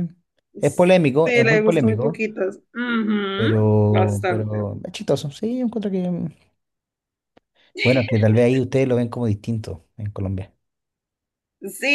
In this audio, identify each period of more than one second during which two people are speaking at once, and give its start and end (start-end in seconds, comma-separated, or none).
0.6-2.2, 3.4-4.7